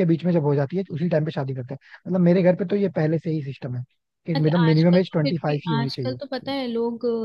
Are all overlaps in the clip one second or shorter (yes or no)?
no